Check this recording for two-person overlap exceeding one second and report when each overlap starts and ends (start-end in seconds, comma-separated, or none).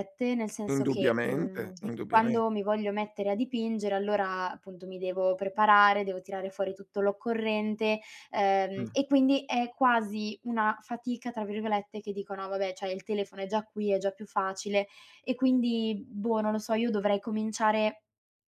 0.7-2.4